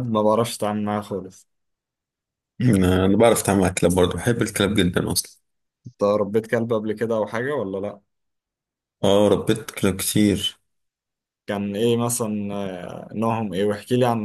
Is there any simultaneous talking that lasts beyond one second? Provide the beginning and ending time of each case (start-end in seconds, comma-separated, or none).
none